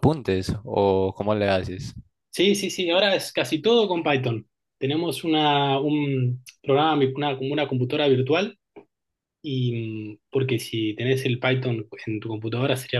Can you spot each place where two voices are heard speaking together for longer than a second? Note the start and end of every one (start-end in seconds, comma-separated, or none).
none